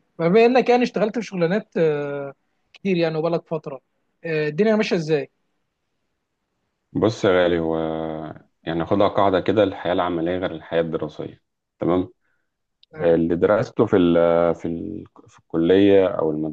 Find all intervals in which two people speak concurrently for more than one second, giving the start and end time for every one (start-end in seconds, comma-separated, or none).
none